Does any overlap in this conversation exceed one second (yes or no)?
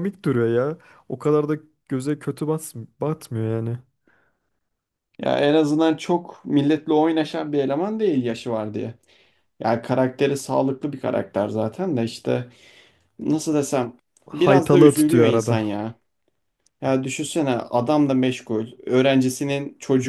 yes